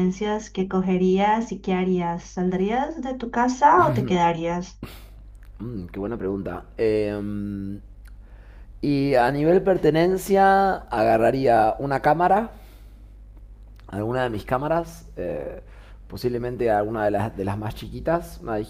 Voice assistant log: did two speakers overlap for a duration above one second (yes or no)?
no